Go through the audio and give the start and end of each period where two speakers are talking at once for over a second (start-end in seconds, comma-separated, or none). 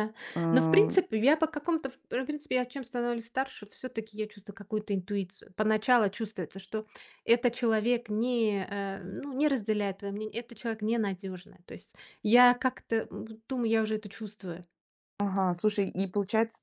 none